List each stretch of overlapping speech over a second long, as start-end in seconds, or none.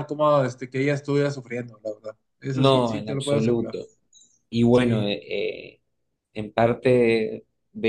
2.5-3.8